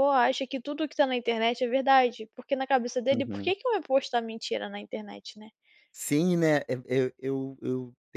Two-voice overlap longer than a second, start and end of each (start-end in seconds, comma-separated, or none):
none